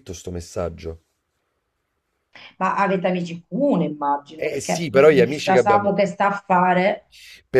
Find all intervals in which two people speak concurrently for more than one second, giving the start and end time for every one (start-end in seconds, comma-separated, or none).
4.4-5.9